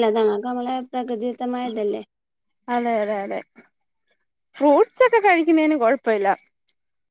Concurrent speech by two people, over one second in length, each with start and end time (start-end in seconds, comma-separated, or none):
none